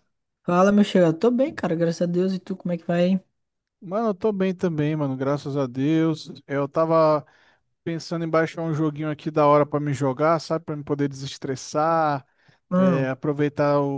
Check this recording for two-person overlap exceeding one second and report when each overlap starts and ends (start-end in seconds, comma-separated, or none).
none